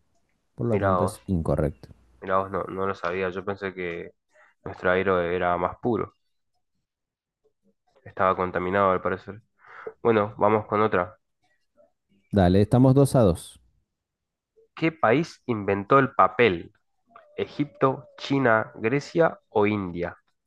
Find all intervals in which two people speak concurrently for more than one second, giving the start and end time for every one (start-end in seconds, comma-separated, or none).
none